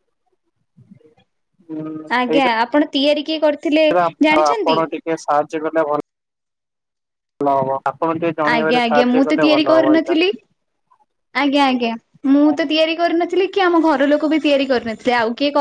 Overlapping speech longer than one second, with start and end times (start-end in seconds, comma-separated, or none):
8.5-10.2